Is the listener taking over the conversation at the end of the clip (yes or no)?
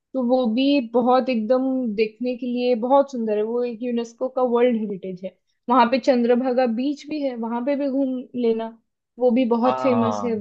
yes